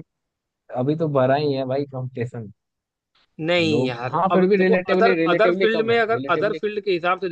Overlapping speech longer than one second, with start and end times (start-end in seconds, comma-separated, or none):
3.7-6.6